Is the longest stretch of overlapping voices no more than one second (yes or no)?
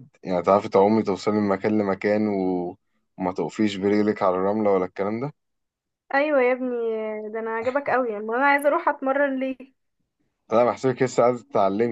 yes